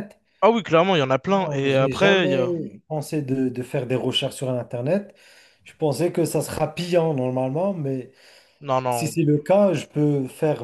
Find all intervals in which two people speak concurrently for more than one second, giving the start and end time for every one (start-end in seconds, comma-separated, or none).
1.3-2.5